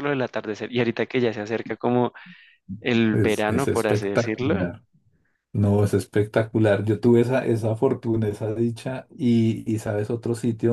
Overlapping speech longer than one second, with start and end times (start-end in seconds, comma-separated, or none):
3.1-4.5